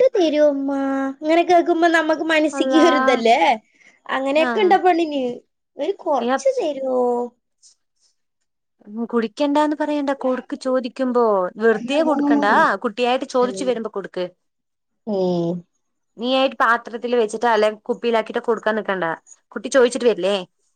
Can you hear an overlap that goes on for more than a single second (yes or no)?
no